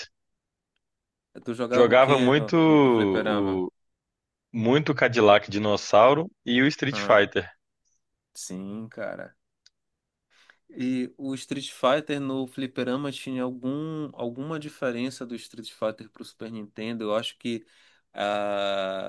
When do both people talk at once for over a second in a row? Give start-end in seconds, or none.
1.7-3.6